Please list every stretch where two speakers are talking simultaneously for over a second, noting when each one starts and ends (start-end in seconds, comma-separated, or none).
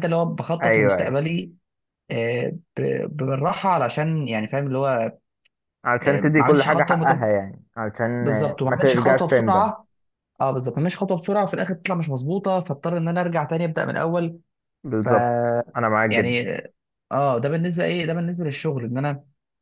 6.0-7.3, 8.2-9.7